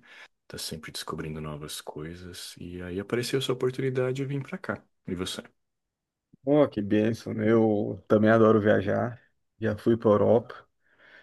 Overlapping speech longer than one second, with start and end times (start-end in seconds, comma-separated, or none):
none